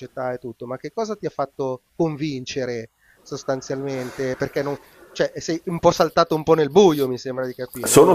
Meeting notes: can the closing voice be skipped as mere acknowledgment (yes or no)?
no